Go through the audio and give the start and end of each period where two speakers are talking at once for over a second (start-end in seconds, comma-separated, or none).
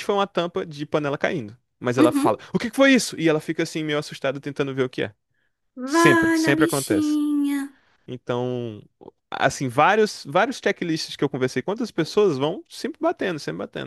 5.9-7.2